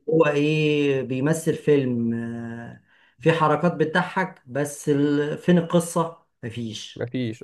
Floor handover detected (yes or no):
no